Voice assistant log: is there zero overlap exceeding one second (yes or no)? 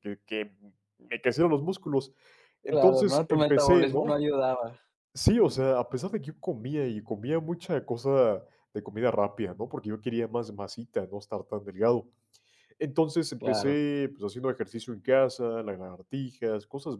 no